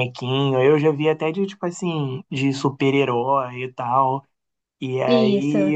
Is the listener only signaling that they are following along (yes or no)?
yes